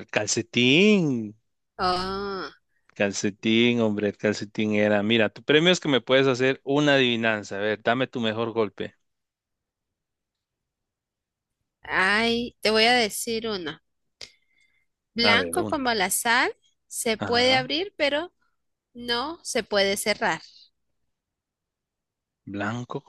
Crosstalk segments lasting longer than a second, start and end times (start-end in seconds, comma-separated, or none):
none